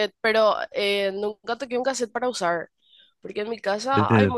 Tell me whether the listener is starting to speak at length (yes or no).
no